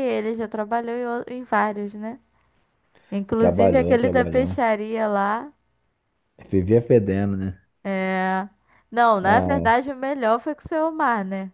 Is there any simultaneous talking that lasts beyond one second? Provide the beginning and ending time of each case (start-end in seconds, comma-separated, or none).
3.4-4.6